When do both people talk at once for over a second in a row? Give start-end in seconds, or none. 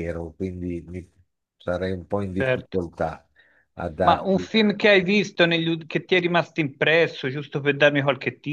none